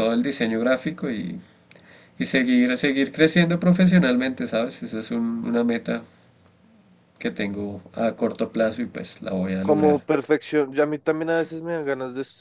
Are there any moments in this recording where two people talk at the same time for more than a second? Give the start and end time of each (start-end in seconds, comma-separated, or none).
none